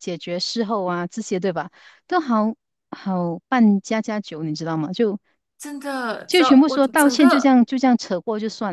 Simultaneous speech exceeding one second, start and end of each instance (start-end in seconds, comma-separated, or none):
6.3-7.6